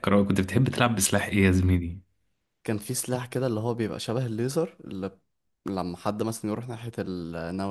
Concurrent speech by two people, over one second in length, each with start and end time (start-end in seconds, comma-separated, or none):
none